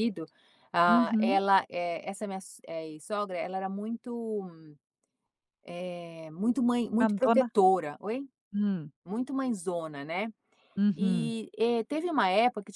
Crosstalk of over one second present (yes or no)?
no